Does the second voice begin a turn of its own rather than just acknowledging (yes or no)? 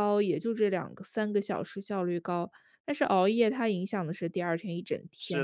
yes